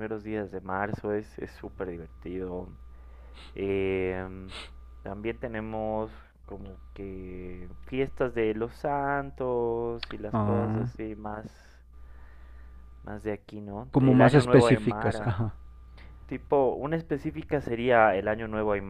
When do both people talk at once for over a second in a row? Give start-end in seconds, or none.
13.9-15.4